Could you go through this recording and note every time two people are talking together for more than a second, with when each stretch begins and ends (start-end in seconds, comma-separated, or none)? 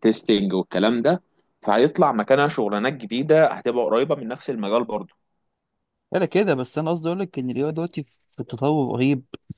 none